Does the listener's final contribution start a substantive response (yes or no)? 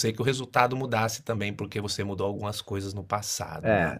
yes